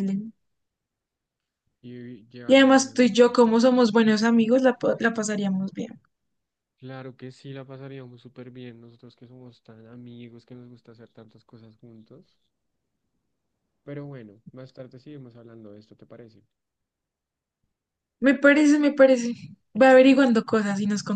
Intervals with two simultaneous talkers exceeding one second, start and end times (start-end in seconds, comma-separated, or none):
2.5-3.7